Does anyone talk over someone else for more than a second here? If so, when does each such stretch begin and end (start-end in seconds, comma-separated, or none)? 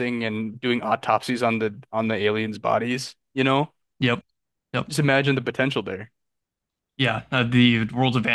none